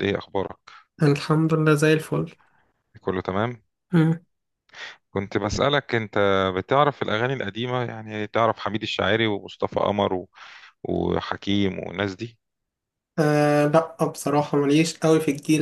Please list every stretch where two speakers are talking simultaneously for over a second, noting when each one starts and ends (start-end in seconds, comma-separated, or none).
none